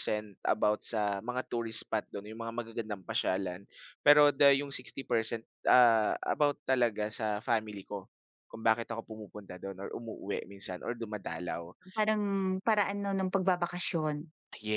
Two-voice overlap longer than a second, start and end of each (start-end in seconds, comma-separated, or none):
none